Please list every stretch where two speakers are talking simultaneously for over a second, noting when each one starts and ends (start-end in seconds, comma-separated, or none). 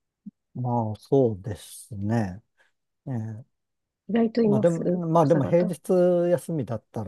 4.5-5.7